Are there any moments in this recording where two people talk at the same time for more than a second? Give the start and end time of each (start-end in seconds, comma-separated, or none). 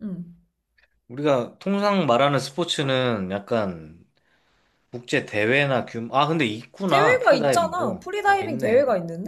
6.9-8.8